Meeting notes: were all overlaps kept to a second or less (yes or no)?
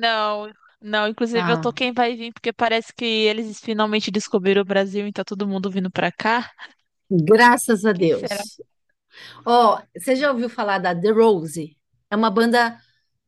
yes